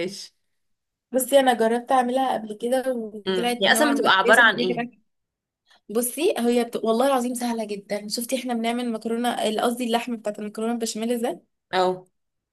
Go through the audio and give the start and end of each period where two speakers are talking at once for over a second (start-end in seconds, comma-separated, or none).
3.3-4.8